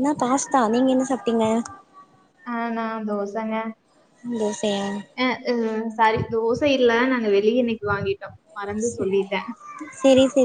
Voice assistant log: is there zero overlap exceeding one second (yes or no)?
yes